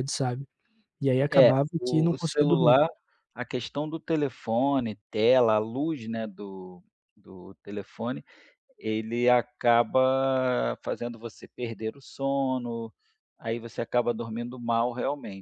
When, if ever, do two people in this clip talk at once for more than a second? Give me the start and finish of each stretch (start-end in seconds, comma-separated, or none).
1.3-2.8